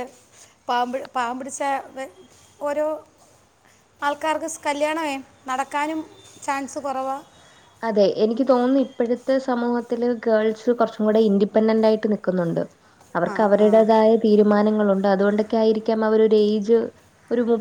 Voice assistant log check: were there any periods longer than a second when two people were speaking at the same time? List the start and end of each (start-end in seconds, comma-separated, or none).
none